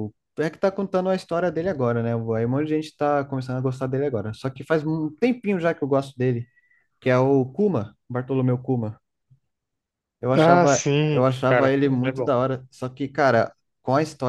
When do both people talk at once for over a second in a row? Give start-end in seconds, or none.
10.3-12.3